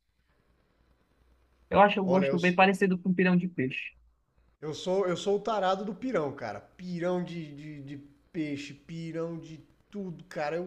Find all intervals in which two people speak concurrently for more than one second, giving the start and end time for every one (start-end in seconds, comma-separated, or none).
none